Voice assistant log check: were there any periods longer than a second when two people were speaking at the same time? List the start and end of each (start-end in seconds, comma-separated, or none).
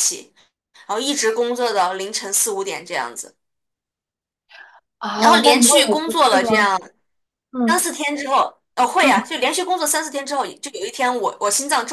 5.1-6.5